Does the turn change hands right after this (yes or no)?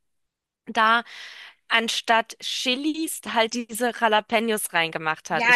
yes